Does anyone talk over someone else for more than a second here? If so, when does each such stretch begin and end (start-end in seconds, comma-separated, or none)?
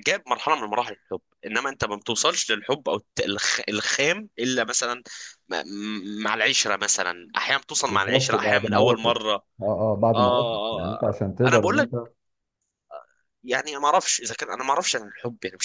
7.8-9.1, 10.1-11.9